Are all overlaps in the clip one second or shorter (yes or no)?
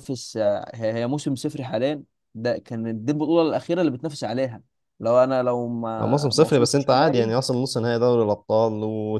no